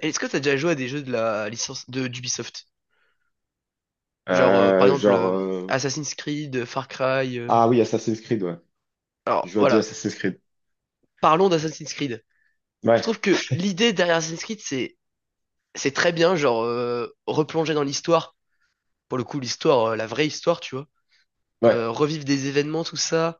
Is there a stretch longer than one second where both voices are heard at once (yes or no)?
yes